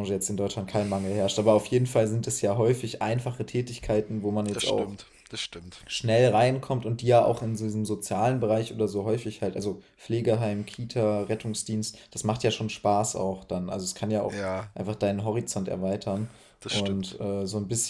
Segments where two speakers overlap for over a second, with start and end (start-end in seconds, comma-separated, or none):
none